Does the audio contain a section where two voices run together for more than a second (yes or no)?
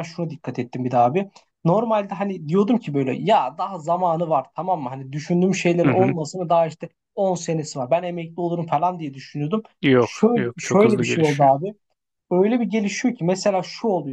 yes